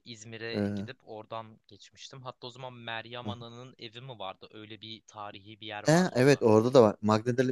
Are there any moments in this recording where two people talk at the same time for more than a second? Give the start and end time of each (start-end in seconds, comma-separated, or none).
none